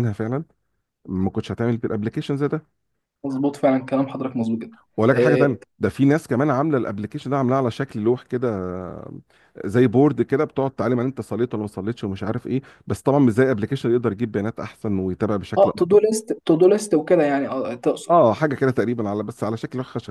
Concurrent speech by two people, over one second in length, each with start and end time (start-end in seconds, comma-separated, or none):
none